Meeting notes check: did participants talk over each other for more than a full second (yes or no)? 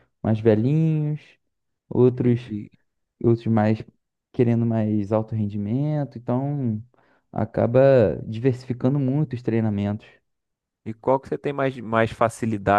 no